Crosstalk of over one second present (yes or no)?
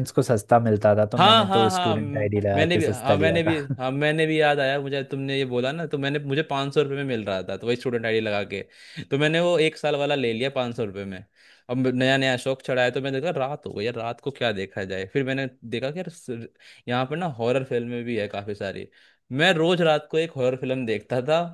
yes